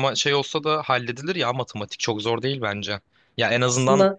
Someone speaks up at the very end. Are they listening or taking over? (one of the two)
listening